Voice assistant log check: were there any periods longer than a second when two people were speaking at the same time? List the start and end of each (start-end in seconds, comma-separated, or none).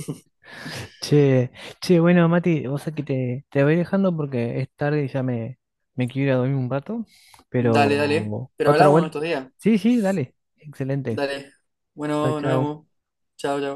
7.6-9.1